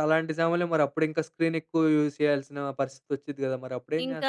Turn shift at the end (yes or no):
yes